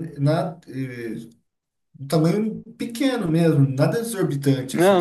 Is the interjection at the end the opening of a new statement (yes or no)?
yes